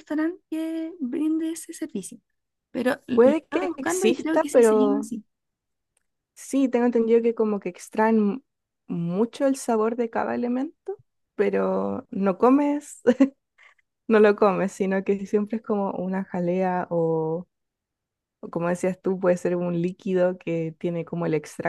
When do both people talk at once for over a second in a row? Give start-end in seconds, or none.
3.1-5.1